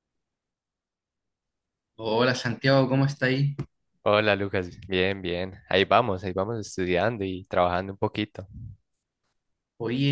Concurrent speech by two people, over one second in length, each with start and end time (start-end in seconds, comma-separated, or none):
none